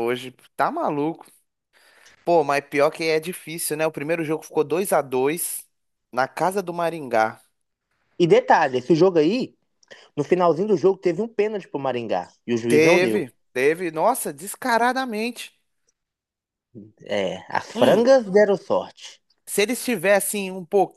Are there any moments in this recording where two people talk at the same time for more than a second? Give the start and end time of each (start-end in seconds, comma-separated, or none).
none